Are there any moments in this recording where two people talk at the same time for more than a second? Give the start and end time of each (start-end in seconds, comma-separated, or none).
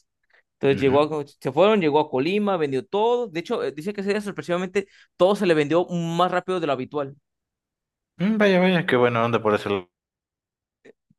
none